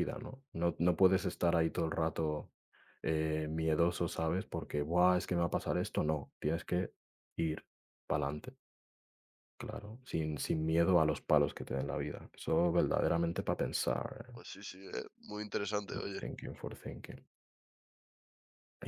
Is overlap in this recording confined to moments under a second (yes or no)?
yes